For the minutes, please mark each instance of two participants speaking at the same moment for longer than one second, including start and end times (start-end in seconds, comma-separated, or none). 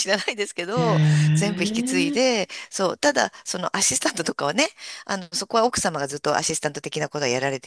0.7-2.2